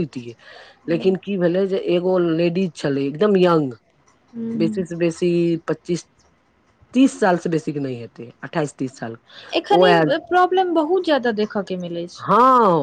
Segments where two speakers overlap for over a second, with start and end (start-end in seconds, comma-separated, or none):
none